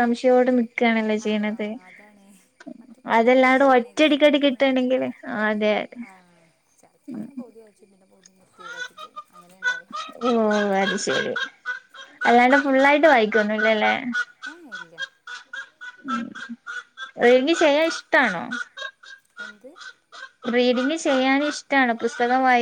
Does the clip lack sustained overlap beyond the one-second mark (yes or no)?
no